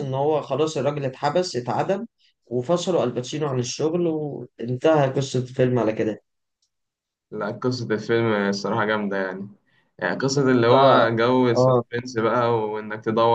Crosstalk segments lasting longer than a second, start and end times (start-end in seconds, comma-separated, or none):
none